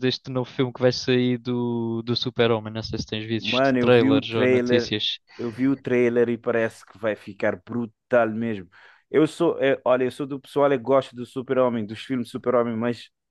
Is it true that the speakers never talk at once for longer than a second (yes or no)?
no